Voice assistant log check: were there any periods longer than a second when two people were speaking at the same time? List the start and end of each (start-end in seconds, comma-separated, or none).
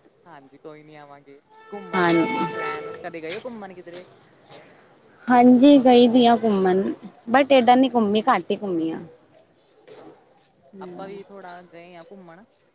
none